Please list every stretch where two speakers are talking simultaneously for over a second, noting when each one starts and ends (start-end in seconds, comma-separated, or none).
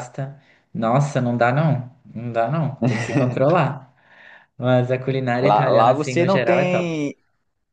5.4-7.0